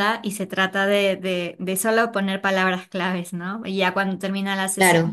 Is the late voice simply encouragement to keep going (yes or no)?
yes